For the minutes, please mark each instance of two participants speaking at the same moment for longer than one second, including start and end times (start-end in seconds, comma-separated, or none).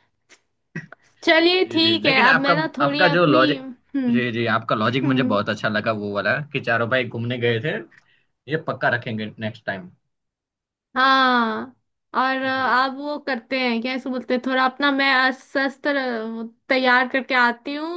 1.7-3.6